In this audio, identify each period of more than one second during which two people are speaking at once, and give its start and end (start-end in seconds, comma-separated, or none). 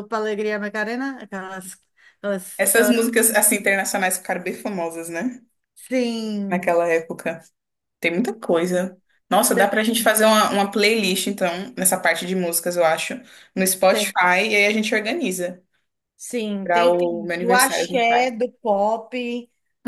16.6-18.3